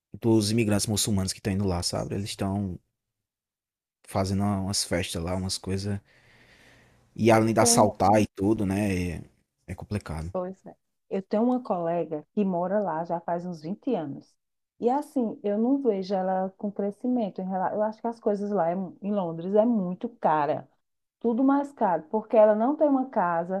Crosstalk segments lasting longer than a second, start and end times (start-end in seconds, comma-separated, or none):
none